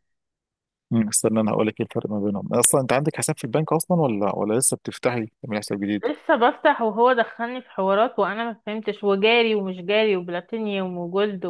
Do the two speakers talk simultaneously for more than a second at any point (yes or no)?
no